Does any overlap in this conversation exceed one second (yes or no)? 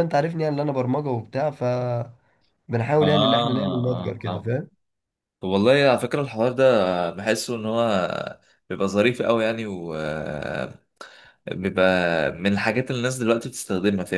yes